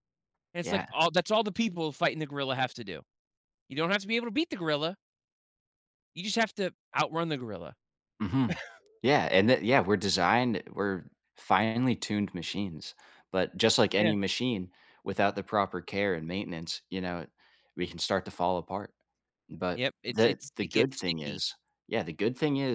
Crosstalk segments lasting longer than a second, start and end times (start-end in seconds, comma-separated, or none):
19.7-21.4